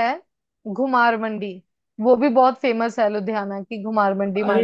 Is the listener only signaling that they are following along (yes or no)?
no